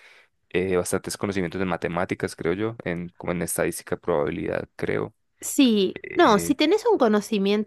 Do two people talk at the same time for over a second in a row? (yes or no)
no